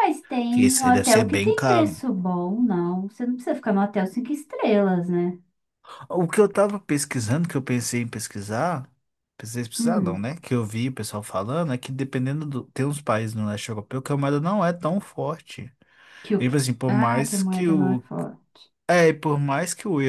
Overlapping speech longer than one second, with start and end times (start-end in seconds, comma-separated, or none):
0.6-1.9, 16.4-18.0